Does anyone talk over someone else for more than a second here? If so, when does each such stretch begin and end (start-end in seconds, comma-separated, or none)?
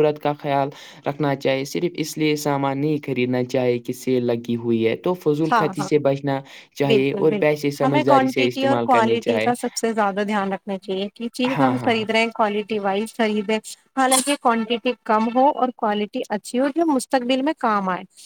6.9-9.5